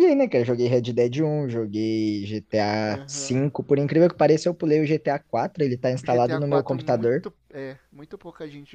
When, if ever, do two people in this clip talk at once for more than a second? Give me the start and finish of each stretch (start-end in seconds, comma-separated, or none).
6.0-7.2